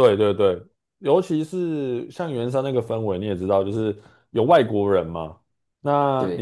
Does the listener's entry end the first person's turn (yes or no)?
no